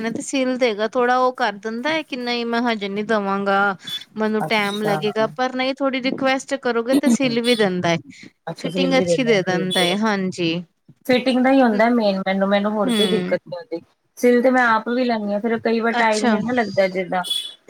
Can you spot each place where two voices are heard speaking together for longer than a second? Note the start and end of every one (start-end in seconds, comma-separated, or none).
8.6-10.0